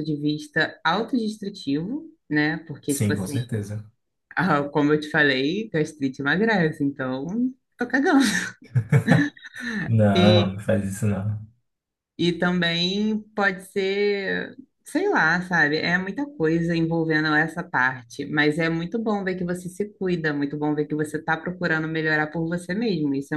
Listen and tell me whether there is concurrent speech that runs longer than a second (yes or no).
no